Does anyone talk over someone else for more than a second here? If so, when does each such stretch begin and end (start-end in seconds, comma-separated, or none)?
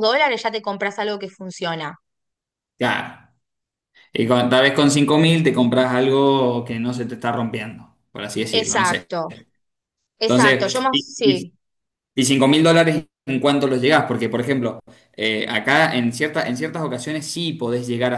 10.2-11.5